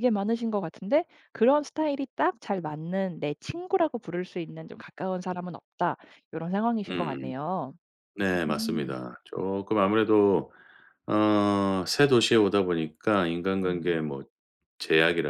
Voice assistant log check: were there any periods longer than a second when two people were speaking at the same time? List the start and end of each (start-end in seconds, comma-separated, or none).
none